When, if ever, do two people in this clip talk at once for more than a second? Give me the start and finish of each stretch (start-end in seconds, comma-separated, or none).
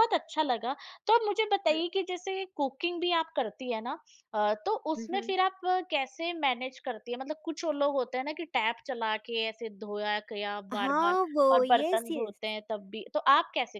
10.7-12.4